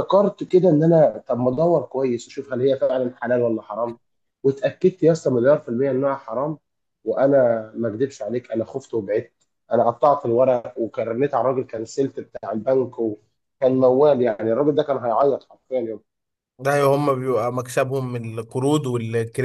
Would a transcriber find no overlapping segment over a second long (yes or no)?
yes